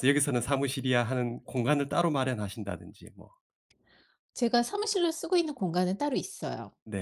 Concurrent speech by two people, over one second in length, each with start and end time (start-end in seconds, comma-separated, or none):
none